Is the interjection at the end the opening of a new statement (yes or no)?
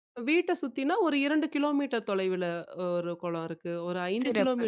no